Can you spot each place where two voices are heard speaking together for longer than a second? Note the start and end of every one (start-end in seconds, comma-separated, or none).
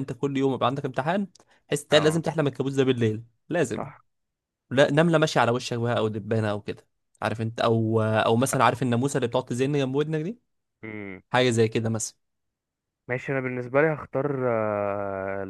none